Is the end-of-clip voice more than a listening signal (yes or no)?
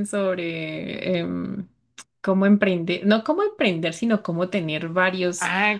yes